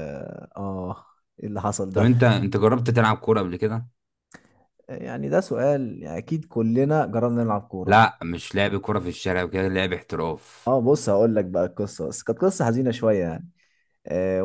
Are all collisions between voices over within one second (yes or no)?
yes